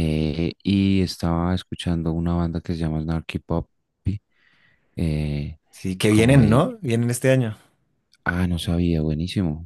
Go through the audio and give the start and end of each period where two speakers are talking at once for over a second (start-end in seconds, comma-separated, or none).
none